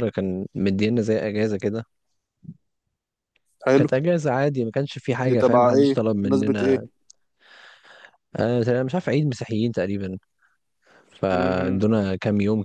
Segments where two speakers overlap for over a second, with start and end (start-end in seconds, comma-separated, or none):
5.3-6.8